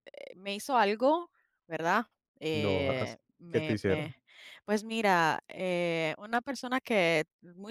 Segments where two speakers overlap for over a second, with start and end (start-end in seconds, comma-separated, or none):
2.5-4.2